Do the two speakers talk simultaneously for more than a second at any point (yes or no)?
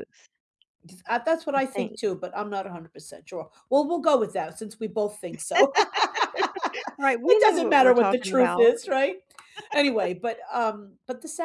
yes